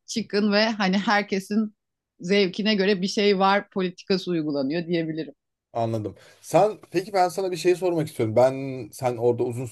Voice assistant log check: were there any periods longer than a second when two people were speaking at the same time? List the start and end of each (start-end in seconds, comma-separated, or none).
none